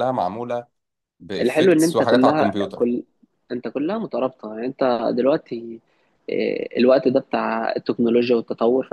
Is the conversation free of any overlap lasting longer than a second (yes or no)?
no